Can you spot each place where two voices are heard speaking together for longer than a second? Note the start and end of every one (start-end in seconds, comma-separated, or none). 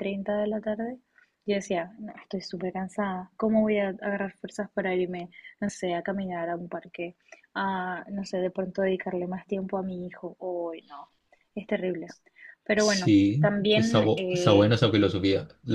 12.7-14.7